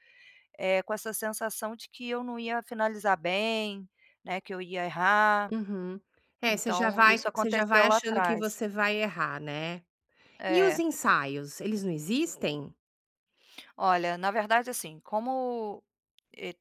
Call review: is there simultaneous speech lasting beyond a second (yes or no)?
yes